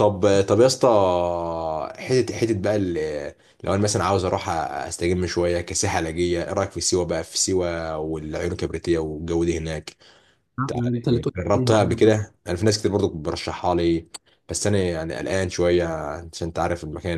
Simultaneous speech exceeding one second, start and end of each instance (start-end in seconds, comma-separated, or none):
10.8-12.3